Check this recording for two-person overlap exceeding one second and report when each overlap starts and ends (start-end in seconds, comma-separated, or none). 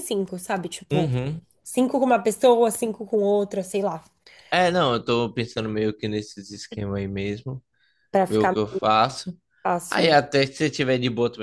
none